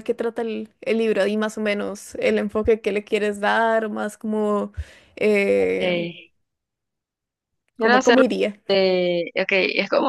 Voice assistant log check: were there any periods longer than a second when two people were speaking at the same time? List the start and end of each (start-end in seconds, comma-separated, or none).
none